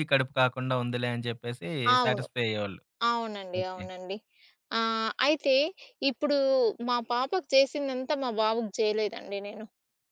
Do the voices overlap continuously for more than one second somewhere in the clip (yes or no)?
no